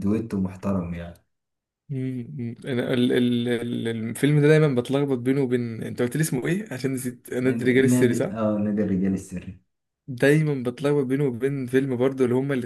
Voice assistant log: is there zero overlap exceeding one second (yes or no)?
yes